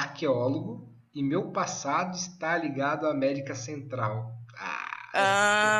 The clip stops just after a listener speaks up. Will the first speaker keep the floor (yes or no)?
no